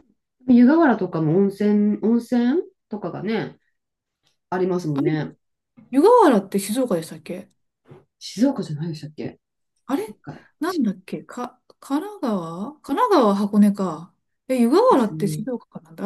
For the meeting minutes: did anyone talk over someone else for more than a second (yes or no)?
no